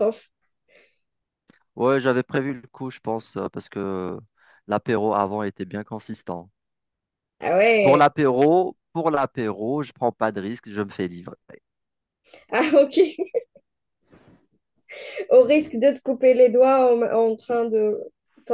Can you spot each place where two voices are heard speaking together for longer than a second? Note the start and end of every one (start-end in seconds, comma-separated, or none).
none